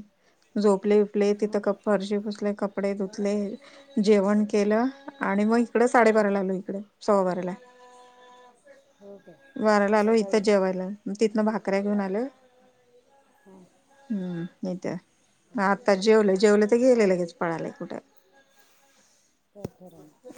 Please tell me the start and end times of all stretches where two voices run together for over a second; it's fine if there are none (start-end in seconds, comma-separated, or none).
none